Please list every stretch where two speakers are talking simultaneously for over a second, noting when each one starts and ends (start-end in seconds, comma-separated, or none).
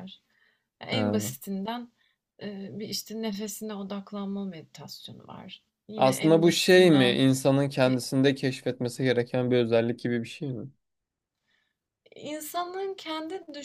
6.0-7.2